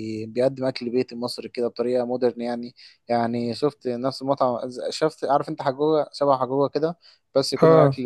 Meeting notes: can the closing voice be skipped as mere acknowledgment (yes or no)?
yes